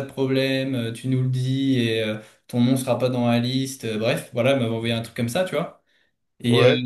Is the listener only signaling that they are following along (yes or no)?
yes